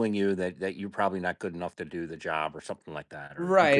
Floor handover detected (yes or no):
yes